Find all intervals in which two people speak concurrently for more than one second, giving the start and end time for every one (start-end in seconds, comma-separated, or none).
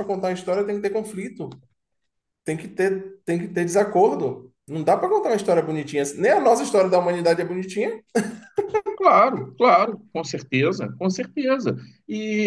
none